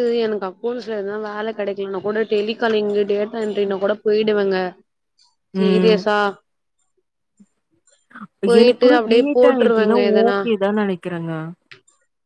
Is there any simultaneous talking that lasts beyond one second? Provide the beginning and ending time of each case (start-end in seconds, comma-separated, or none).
8.6-10.4